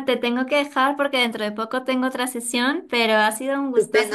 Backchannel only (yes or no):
no